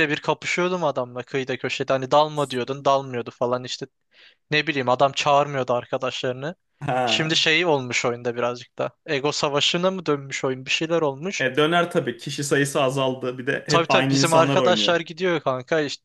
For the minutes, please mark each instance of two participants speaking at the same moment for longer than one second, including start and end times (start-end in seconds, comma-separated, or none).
13.7-15.0